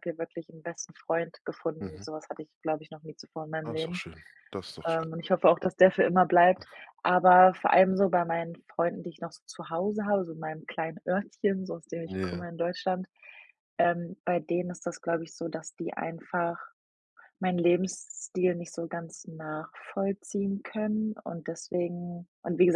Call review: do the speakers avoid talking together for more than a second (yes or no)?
yes